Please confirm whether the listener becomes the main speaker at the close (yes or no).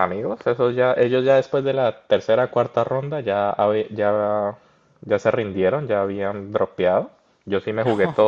no